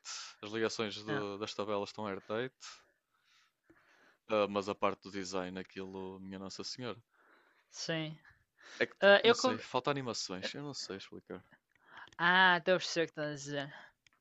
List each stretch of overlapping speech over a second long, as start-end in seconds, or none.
none